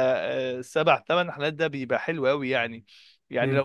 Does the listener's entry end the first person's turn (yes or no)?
no